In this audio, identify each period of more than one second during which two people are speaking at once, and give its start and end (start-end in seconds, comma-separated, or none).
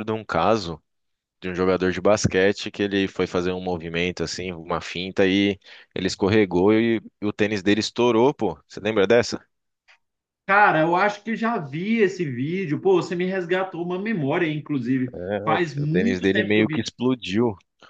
15.1-16.9